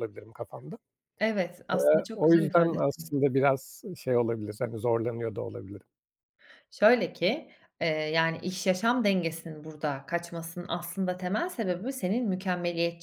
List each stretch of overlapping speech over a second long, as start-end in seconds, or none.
1.7-3.1